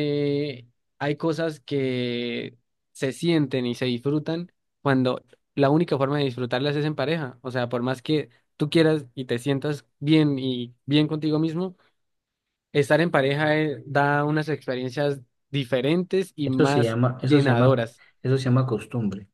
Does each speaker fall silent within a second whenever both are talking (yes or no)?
no